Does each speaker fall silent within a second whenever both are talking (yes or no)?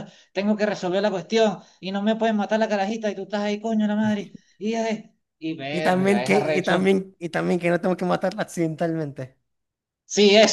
no